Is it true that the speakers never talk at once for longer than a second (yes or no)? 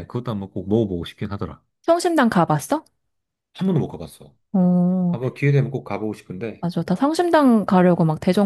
yes